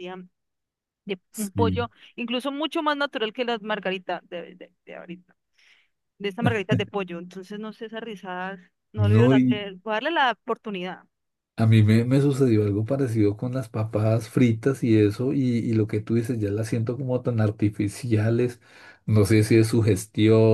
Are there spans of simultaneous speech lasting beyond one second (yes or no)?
no